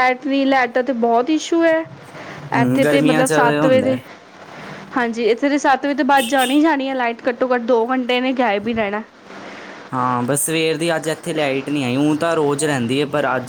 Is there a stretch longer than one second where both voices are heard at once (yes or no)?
yes